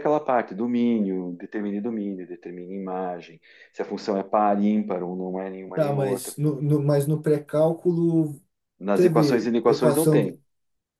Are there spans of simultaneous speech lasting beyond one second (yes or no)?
yes